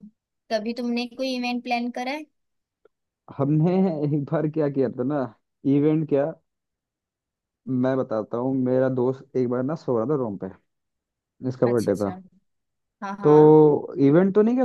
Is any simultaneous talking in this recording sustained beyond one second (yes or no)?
no